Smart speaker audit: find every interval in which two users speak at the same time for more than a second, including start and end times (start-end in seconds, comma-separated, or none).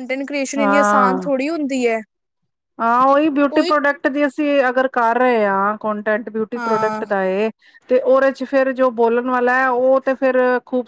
none